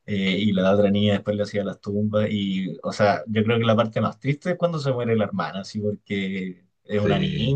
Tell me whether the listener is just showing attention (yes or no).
yes